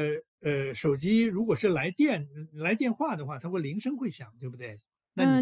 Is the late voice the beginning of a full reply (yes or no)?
yes